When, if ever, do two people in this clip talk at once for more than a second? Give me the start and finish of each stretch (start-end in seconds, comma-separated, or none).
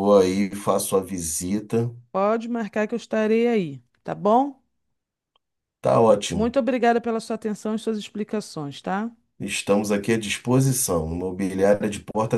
none